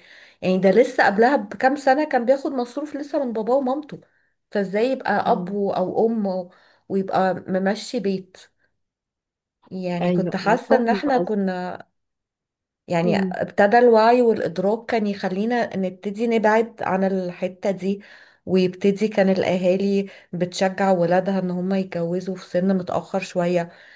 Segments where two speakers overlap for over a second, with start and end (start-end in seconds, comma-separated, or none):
10.0-11.5